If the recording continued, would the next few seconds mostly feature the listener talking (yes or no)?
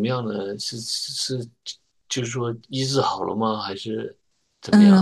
yes